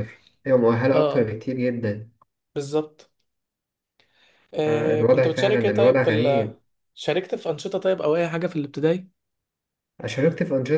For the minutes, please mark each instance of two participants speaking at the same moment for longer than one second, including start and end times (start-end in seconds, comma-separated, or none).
4.7-6.5